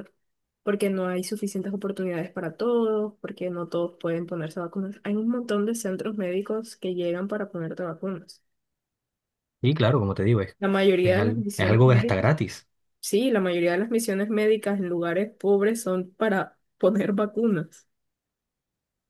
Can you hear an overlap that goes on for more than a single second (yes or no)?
yes